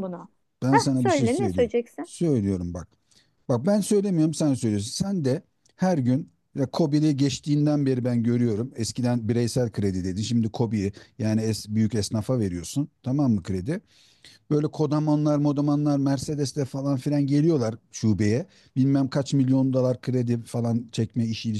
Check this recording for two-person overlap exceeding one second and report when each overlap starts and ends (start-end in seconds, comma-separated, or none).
0.7-2.1